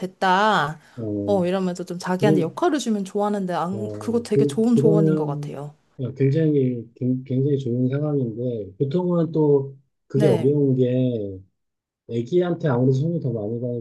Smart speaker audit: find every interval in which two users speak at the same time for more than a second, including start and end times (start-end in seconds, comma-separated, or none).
3.7-5.6